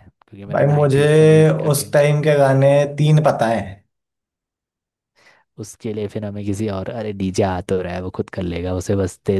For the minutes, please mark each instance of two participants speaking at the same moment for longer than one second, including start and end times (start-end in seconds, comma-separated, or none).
0.5-2.0